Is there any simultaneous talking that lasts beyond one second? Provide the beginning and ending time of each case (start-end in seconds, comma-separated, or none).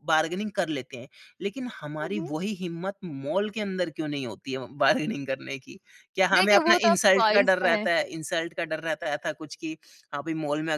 6.3-7.9